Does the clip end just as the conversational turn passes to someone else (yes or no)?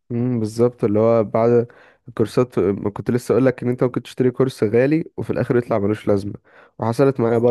no